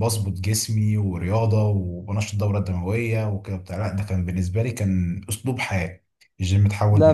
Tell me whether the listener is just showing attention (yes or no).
yes